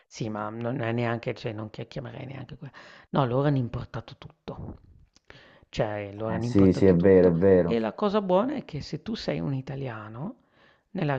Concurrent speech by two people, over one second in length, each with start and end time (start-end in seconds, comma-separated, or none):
6.3-7.8